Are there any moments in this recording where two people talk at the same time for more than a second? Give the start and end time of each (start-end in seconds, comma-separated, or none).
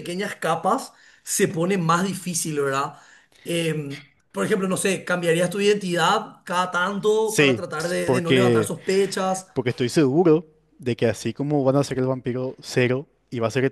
7.2-8.7